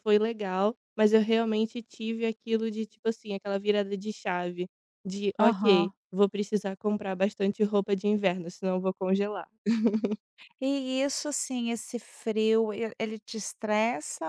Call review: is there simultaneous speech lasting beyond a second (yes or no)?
no